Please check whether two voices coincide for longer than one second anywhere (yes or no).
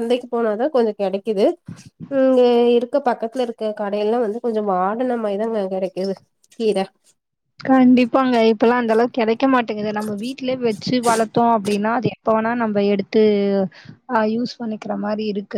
no